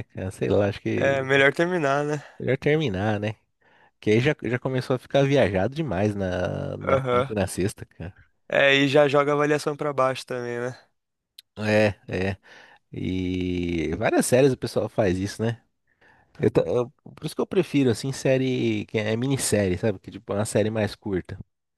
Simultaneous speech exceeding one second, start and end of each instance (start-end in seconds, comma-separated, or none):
none